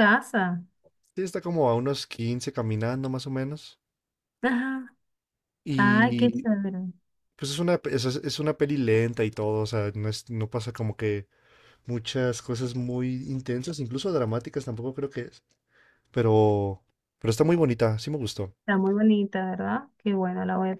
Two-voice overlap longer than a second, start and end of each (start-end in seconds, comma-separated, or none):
none